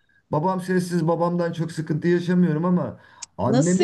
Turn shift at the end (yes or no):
yes